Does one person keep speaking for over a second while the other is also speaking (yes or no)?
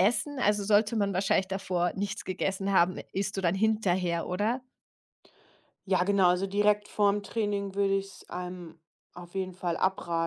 no